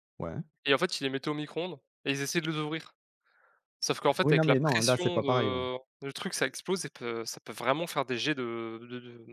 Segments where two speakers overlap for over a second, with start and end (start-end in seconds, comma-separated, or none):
4.2-5.6